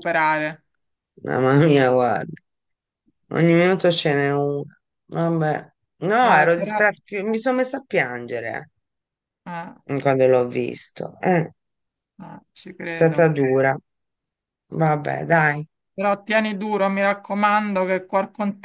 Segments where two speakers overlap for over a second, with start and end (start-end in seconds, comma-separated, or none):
none